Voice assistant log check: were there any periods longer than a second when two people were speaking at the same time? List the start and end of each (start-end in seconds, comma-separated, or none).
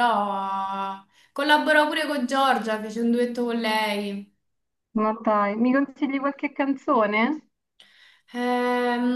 none